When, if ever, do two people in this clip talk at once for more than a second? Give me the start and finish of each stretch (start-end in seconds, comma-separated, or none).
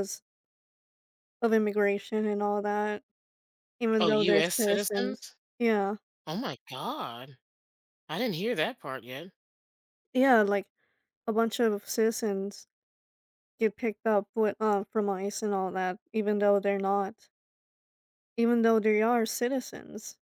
4.0-5.3